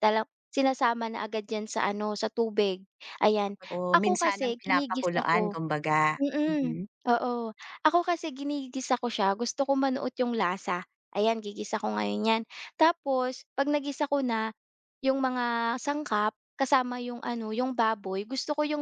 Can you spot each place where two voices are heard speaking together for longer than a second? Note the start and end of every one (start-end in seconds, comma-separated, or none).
3.9-5.5